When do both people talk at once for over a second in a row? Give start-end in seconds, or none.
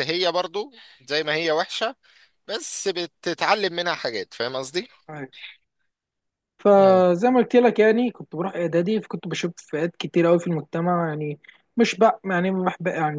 none